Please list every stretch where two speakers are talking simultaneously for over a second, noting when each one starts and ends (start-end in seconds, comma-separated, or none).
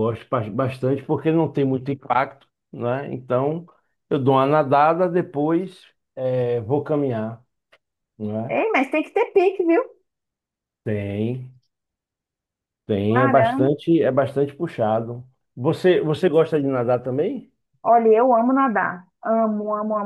none